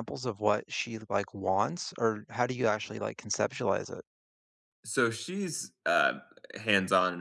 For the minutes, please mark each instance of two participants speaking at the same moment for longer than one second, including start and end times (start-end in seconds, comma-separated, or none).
none